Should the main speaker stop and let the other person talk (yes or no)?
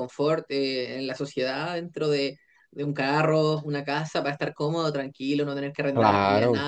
no